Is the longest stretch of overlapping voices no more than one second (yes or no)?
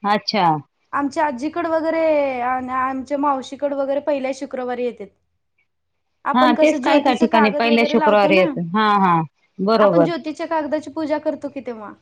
no